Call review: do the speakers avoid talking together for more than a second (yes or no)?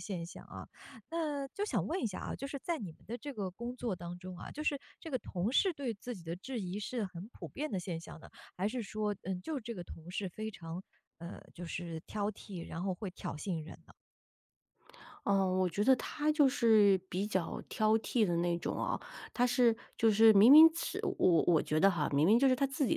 yes